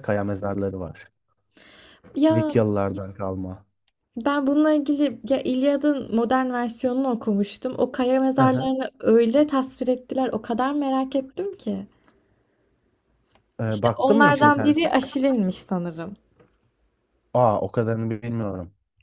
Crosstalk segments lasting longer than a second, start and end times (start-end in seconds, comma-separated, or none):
13.7-15.0